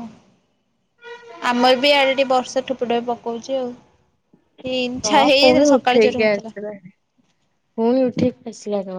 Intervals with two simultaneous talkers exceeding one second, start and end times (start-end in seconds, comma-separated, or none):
5.1-6.5